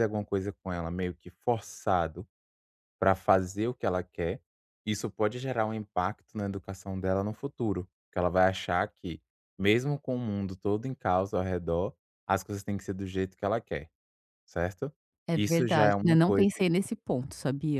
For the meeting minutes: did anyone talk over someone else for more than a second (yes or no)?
yes